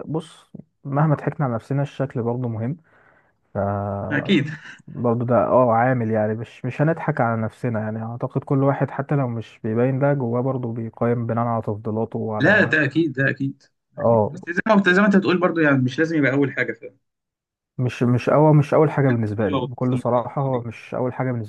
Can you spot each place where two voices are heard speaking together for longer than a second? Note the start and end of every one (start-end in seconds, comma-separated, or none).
19.4-20.8